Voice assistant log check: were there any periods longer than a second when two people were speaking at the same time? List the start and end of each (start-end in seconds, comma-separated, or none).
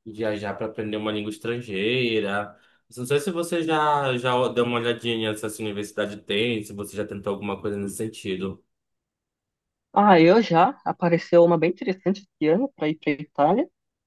none